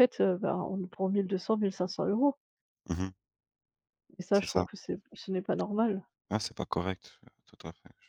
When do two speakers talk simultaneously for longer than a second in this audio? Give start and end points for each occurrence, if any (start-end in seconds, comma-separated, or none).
none